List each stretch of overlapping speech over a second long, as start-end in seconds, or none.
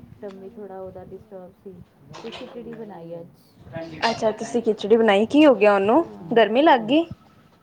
5.4-6.8